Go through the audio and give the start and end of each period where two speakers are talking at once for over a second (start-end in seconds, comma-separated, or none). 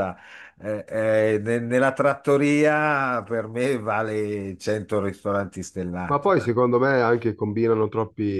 none